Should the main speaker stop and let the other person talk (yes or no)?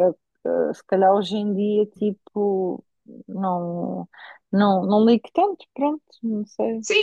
yes